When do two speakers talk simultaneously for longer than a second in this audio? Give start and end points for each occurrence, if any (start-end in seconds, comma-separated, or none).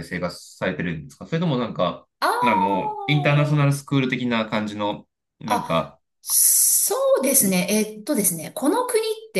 2.4-3.8